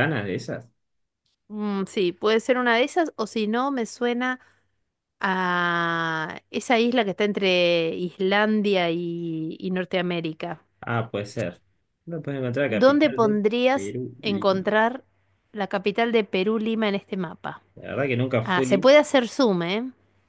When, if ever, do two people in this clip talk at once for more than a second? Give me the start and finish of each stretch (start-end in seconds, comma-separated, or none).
12.7-14.7